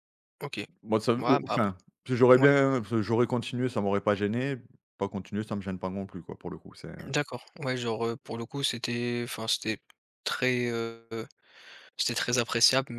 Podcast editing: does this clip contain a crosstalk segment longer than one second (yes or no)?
no